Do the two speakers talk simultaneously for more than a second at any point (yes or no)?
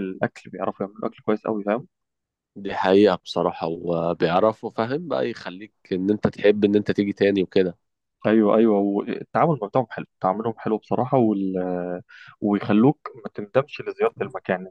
no